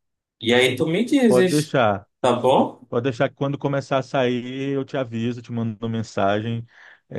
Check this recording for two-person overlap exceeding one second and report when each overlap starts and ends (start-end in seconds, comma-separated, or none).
none